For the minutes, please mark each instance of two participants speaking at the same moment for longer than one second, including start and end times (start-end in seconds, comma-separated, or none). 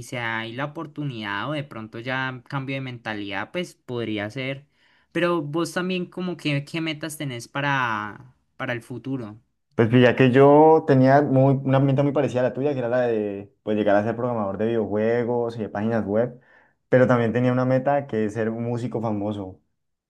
none